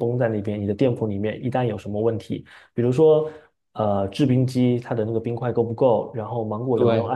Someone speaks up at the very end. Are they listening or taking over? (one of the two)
listening